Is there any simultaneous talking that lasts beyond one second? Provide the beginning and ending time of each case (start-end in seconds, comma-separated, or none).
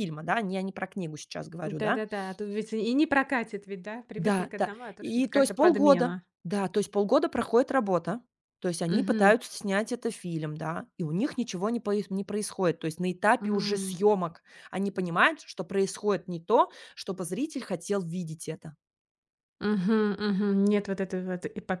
4.2-6.2